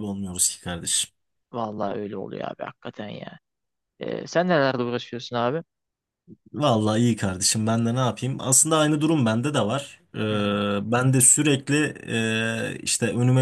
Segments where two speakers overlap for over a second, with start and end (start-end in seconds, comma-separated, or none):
none